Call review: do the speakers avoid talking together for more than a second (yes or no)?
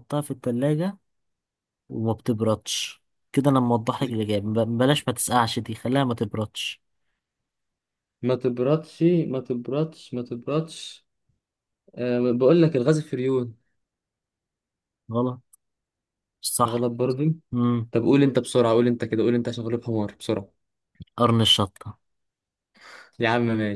yes